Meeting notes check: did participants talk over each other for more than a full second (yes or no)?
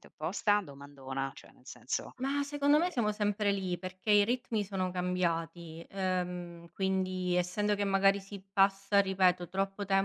no